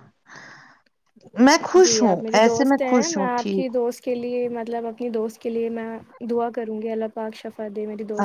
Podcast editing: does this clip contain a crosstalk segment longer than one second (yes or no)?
yes